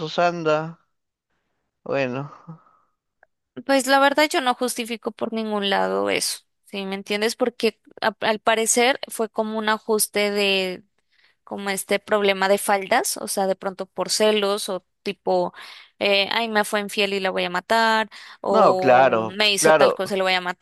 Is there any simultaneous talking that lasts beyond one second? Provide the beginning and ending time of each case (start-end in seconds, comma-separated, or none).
18.5-20.0